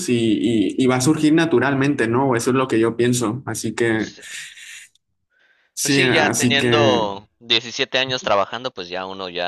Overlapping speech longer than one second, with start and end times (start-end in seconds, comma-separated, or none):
5.8-7.1